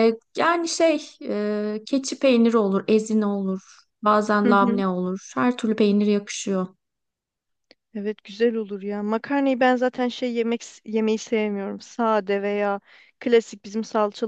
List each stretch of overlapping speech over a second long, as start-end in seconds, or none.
none